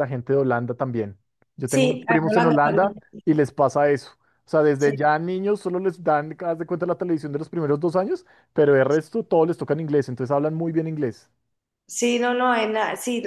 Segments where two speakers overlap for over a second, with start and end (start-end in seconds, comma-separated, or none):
1.6-2.9